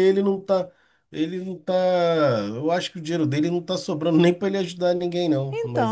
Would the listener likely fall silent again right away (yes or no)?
no